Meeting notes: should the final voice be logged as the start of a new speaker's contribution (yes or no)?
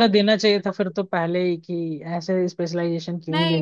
yes